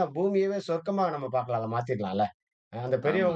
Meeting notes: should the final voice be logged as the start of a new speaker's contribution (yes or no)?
no